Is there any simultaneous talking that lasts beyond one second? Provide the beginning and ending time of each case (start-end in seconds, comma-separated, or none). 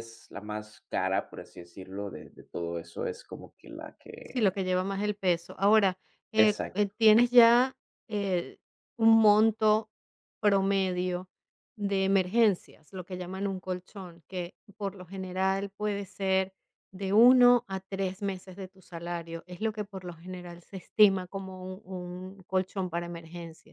none